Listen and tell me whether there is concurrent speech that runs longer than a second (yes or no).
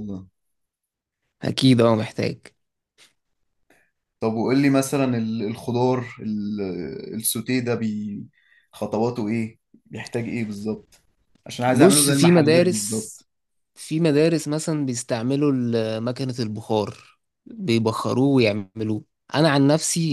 yes